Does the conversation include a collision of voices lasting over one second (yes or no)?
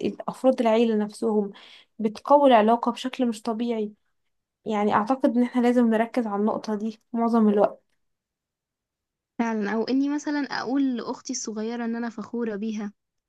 no